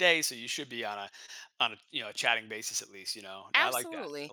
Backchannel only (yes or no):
no